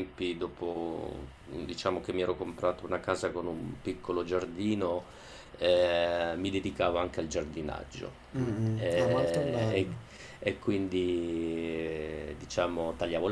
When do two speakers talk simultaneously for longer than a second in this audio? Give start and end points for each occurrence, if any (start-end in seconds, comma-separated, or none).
8.3-9.9